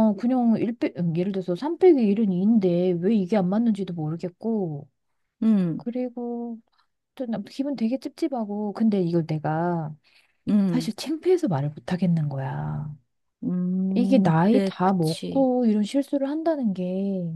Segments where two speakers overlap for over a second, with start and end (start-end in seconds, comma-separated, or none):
13.9-15.5